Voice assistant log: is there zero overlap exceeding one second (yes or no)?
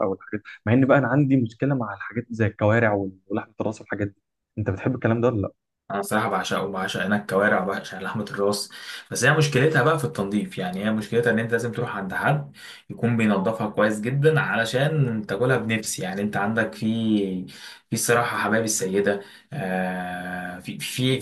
yes